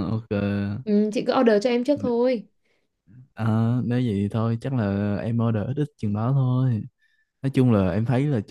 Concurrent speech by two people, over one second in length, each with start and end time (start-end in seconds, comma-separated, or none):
none